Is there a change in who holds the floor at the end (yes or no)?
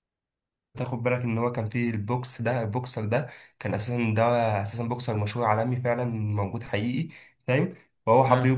no